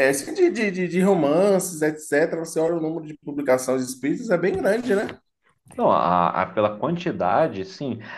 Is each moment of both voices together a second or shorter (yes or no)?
yes